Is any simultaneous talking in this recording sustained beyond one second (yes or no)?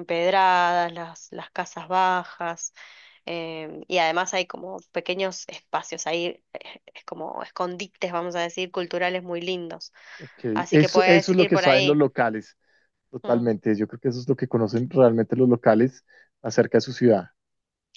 yes